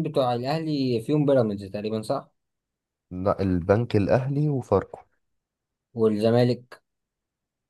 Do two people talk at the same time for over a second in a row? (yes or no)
no